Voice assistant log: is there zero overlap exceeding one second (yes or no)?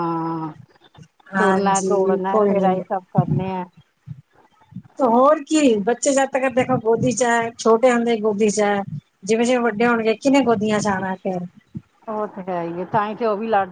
no